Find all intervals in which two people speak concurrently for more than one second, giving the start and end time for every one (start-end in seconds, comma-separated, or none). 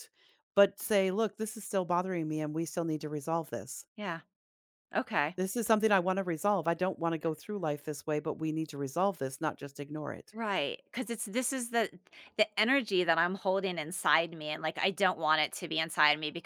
none